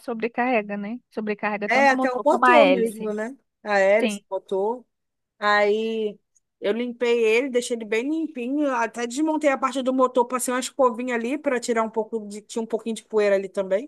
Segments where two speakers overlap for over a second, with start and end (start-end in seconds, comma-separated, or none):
1.6-3.1